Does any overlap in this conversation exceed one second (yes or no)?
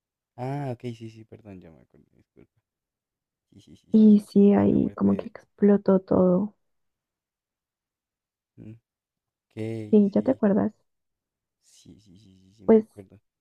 yes